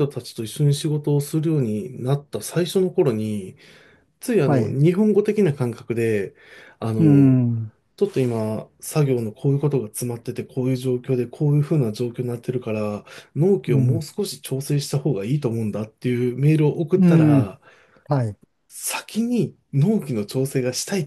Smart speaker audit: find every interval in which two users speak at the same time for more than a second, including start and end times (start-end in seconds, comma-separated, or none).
none